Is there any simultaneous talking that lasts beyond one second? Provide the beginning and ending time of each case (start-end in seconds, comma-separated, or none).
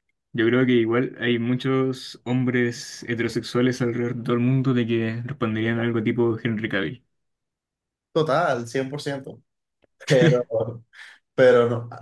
none